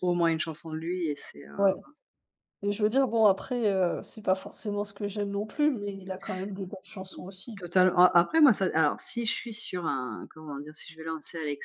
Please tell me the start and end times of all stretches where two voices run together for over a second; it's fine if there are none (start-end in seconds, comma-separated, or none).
none